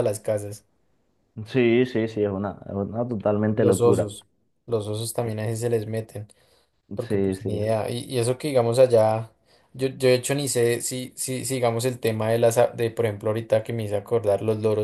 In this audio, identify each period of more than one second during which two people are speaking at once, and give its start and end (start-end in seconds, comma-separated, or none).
none